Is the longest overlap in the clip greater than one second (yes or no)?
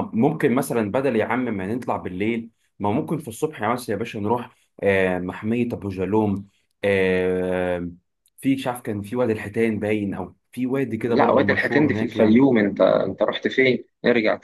yes